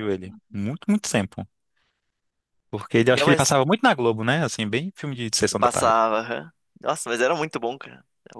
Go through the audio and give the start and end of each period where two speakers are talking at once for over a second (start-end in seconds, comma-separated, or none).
none